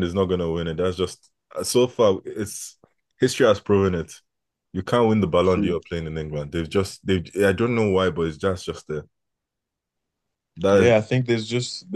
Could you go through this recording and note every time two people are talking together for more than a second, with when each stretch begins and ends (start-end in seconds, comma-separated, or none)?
none